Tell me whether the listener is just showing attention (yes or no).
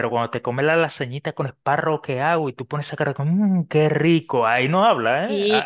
no